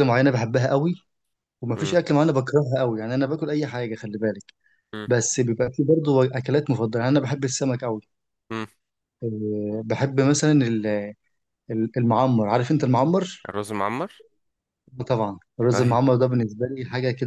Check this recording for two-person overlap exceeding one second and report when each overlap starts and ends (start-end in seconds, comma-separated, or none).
none